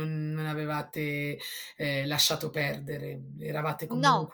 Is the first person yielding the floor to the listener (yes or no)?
no